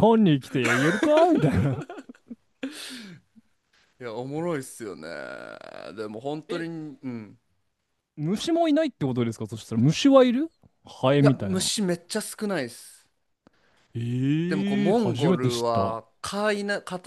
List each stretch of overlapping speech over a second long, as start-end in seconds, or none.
14.5-16.0